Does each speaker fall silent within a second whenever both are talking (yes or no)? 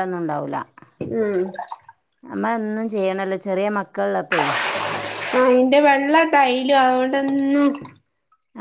yes